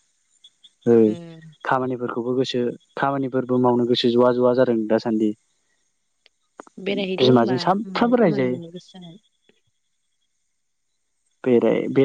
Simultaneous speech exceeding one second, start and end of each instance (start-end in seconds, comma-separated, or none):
7.2-8.6